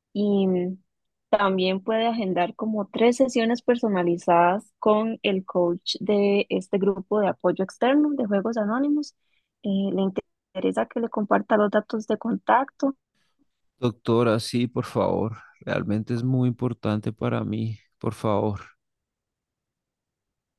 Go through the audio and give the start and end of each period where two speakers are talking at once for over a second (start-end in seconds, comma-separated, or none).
none